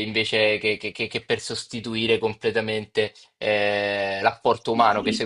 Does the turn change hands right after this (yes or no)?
no